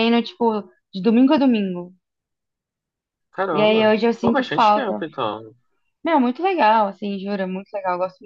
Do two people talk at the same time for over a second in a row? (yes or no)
yes